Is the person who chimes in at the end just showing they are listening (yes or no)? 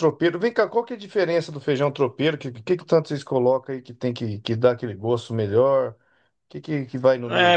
no